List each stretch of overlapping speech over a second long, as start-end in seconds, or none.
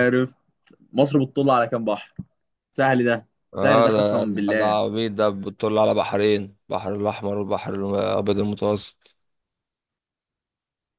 3.6-4.8